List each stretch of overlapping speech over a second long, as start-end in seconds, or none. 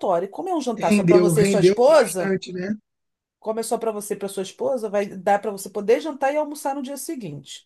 0.8-2.3